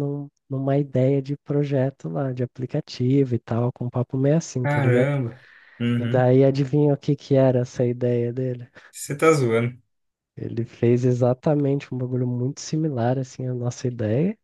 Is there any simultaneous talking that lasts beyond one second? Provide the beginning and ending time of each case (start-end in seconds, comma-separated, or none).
none